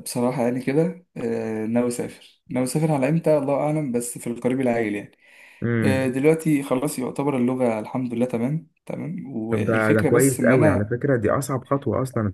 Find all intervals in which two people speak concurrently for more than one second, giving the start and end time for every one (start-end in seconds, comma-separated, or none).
9.5-10.9